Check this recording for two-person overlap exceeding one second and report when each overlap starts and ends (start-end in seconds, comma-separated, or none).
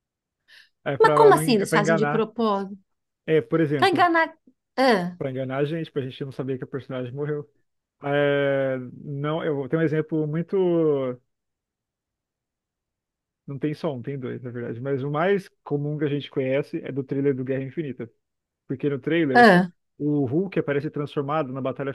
1.0-2.3